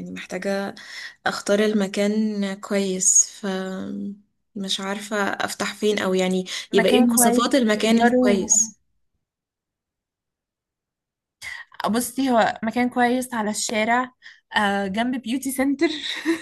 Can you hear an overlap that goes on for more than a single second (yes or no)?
yes